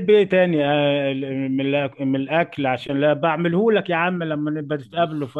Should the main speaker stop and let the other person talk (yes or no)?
yes